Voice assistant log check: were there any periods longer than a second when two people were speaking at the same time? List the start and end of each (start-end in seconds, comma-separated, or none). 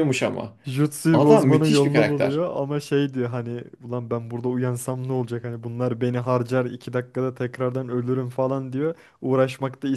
1.1-2.4